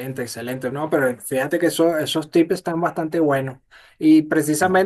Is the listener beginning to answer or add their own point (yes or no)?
no